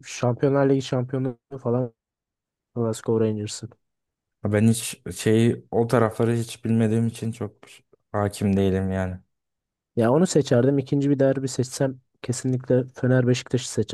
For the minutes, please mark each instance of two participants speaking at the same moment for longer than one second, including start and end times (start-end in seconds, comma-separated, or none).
none